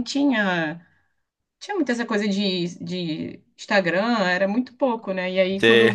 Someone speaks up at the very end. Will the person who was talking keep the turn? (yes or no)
yes